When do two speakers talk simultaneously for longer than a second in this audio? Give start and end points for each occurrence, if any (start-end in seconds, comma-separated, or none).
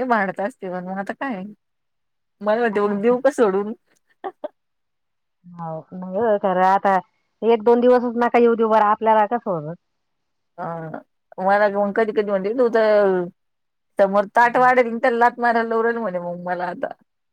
none